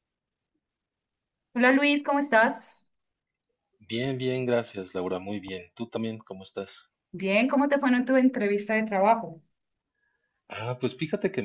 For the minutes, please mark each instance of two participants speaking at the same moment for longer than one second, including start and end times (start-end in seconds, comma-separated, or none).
none